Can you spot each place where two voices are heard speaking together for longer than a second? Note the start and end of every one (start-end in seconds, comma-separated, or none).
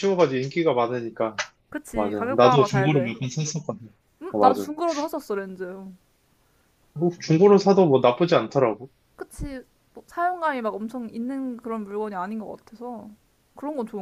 1.9-3.1